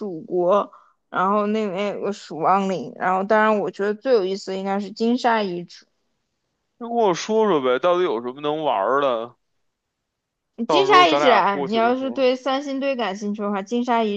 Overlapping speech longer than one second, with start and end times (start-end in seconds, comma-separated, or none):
10.7-12.3